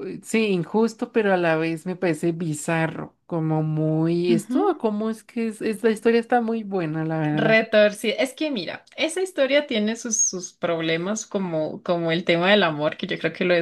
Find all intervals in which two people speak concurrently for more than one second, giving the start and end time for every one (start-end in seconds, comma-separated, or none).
none